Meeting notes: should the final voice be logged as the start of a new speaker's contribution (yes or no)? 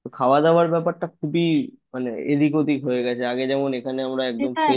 yes